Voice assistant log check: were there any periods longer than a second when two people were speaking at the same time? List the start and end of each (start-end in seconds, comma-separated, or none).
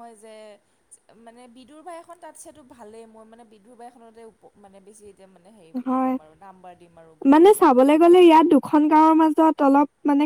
none